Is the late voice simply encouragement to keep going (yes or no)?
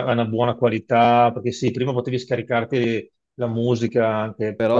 yes